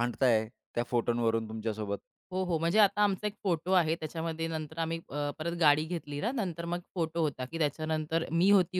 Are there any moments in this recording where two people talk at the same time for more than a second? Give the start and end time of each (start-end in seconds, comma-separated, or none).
none